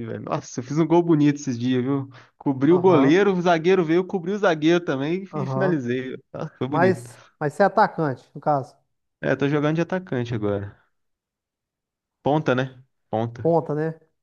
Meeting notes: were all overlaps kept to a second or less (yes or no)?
yes